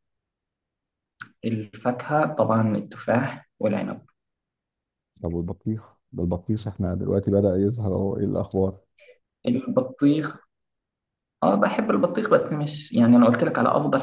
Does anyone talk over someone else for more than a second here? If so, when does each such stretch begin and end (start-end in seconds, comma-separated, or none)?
none